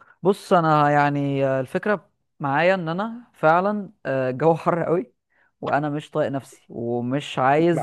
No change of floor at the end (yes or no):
yes